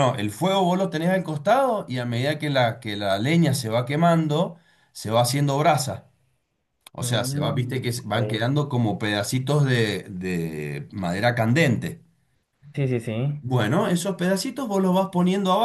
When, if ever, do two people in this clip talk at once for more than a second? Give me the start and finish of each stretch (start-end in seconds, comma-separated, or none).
7.0-8.5